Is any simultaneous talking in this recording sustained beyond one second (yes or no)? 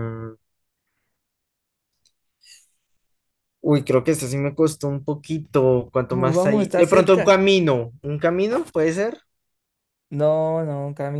yes